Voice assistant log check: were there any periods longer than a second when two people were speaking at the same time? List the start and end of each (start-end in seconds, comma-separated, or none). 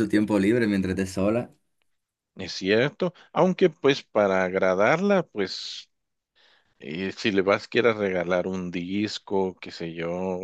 none